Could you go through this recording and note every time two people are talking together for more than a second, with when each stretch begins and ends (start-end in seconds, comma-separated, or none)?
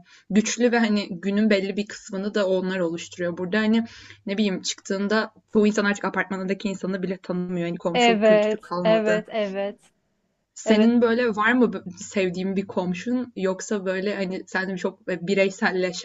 7.9-9.2